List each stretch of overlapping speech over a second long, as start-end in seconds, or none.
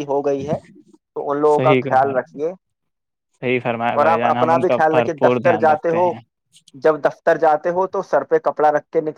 4.0-6.1